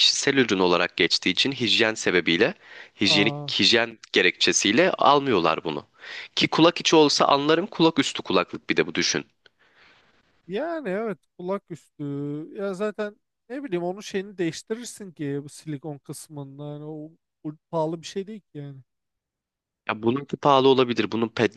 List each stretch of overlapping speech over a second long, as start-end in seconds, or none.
none